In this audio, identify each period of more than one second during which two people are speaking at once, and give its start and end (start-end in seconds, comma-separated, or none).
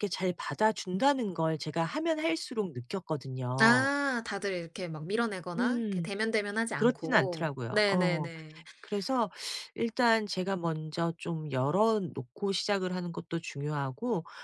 6.7-8.3